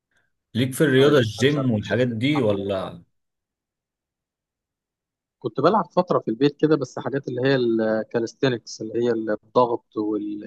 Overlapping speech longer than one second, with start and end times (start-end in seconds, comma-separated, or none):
1.0-3.0